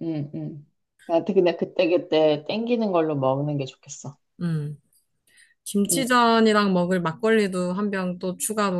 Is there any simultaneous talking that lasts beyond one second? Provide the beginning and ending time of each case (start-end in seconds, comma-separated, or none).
none